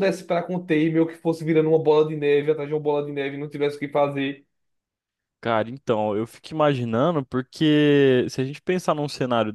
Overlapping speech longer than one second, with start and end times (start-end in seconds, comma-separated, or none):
none